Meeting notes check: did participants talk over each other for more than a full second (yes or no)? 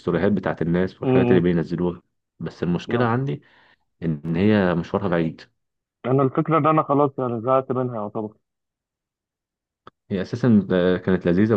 no